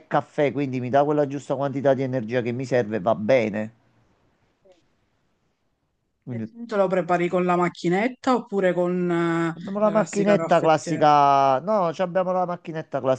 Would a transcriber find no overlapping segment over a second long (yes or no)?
no